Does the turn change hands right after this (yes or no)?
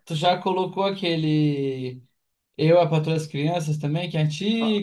yes